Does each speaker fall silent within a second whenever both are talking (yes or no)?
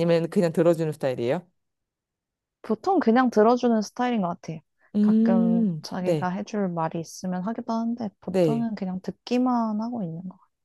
no